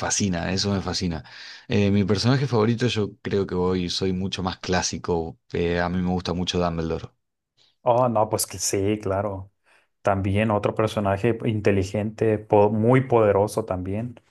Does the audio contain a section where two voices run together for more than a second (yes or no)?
no